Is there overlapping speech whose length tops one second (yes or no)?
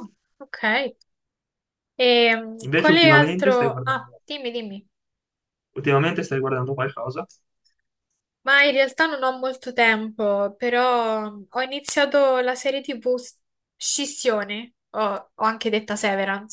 yes